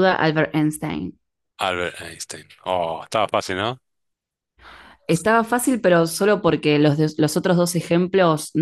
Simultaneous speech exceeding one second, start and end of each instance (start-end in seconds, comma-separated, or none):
none